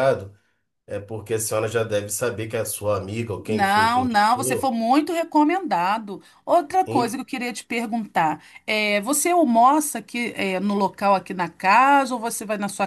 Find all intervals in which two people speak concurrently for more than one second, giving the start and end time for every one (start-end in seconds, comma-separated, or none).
3.5-4.7